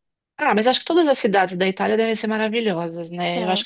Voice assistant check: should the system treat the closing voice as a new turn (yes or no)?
no